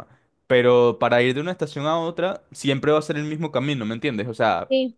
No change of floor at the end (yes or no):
yes